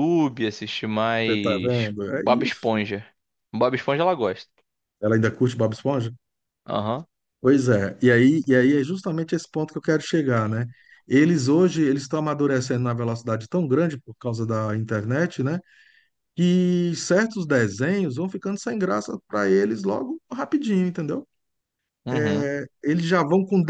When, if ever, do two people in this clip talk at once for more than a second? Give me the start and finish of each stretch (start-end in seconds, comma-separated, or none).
1.2-2.7